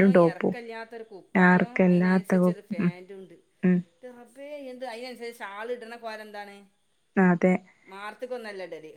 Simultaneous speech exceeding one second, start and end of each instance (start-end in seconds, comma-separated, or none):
1.5-2.9